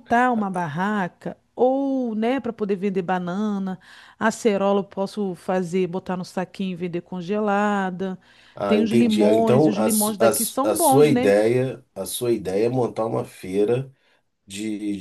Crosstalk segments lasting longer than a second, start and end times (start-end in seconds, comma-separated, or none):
8.7-11.3